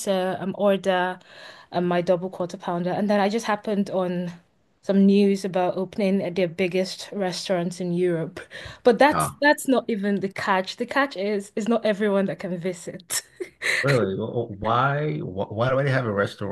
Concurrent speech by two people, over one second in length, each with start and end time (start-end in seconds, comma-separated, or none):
none